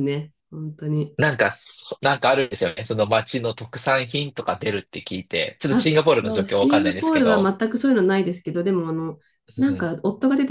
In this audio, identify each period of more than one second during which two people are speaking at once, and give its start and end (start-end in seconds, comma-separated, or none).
5.7-7.5